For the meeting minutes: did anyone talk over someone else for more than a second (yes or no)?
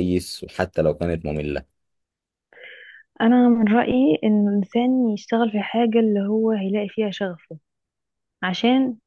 no